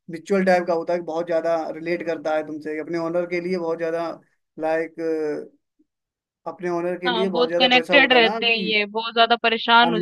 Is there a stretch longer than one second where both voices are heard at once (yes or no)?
yes